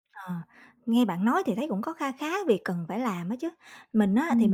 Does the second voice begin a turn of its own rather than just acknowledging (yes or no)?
no